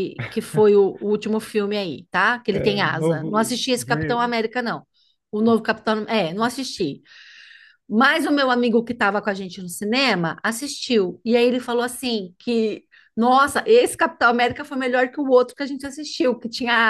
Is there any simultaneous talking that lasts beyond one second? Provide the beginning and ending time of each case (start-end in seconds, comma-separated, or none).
2.5-4.3